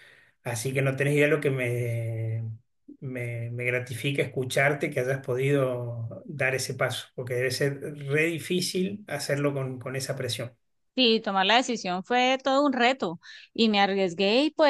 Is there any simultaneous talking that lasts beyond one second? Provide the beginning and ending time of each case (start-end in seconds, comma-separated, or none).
none